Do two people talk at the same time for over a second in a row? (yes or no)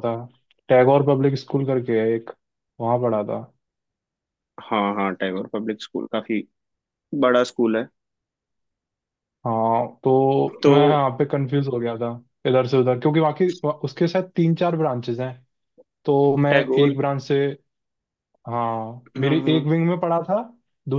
no